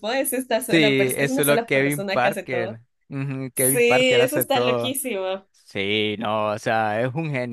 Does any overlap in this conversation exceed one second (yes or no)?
yes